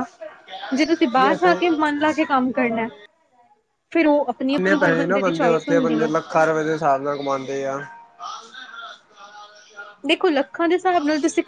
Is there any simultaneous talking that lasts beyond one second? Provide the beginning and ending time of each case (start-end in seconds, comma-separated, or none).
4.5-6.1